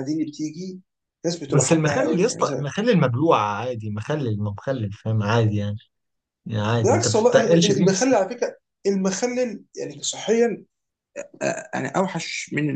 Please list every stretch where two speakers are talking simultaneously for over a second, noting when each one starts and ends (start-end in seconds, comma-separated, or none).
1.5-2.7, 6.8-8.1